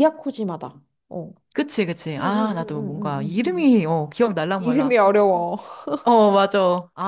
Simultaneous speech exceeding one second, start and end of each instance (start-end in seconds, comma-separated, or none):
2.2-3.7